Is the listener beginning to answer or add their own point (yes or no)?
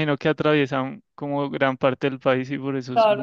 yes